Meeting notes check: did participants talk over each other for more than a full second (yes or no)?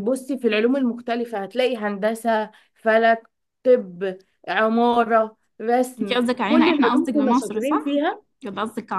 yes